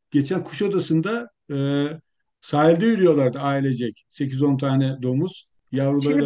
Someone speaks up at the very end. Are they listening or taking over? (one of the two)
taking over